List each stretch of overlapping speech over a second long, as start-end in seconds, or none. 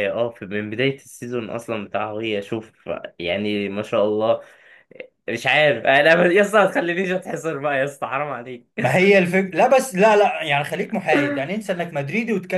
none